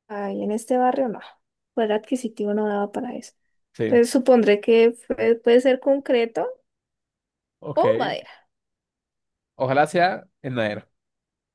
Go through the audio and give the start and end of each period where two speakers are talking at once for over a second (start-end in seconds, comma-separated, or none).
none